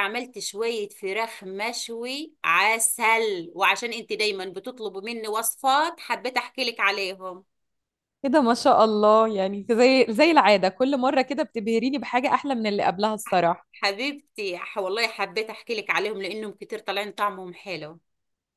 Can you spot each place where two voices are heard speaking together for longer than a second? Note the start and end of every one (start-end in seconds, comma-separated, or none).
none